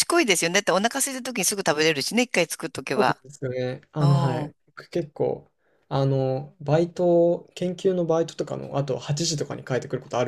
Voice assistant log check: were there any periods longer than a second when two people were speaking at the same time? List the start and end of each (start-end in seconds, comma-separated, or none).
none